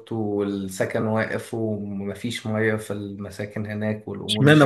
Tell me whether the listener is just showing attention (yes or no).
no